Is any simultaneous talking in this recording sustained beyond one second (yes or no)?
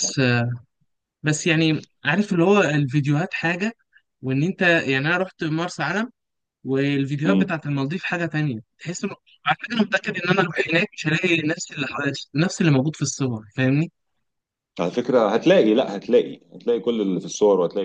no